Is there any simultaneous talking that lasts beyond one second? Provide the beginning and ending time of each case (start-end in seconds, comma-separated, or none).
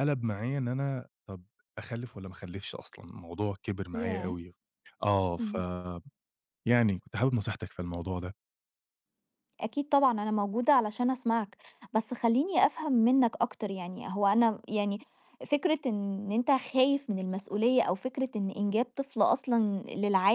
none